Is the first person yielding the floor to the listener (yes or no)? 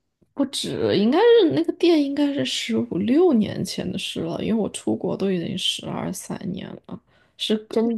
no